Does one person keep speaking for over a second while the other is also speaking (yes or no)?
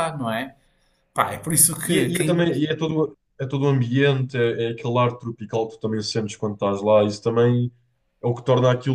no